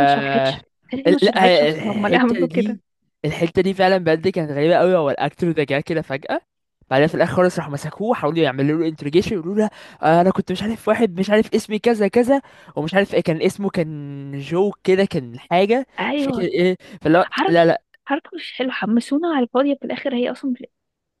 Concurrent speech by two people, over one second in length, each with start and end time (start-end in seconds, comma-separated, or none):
1.1-2.8